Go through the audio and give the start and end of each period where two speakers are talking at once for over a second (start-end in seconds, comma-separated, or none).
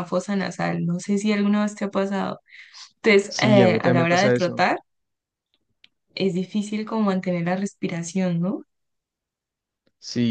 3.3-4.7